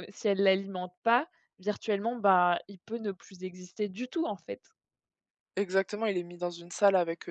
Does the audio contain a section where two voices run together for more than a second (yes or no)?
no